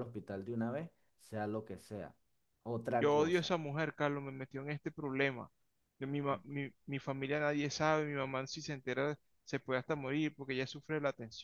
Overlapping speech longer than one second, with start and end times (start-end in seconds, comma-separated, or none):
none